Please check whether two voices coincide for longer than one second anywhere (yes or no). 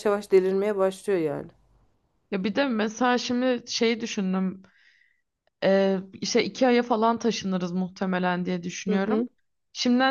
no